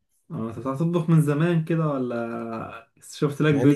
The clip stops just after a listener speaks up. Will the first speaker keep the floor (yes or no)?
no